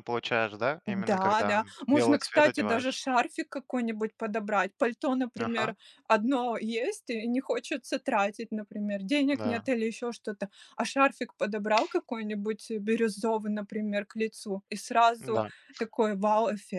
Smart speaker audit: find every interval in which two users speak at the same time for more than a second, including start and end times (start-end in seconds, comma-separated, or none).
0.9-3.0